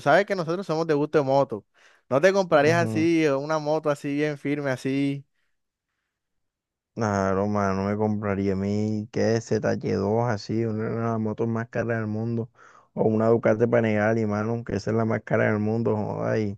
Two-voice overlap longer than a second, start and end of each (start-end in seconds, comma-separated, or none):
none